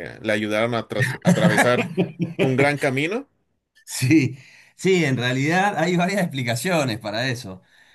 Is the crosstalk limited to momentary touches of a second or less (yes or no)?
yes